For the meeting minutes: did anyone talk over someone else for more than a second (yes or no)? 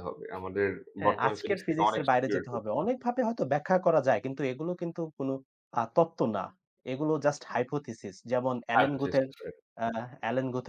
yes